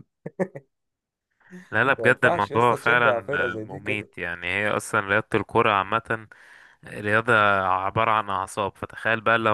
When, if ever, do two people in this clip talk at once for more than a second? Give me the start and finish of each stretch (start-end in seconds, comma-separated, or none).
2.0-4.1